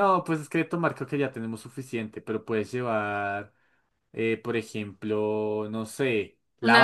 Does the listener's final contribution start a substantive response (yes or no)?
no